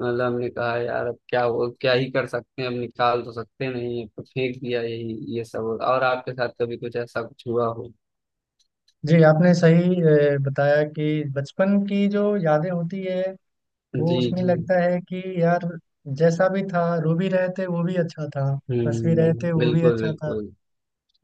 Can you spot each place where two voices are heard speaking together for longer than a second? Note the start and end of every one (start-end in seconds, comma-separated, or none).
18.9-20.3